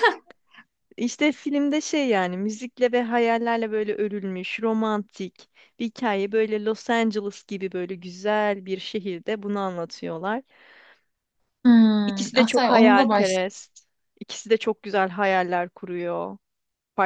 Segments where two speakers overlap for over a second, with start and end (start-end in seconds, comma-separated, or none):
12.1-13.4